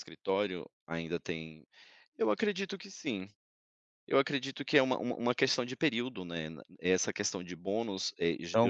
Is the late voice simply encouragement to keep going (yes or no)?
no